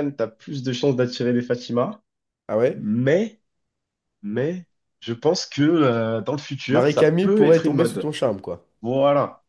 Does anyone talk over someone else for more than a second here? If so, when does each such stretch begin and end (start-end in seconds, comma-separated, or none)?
6.7-8.1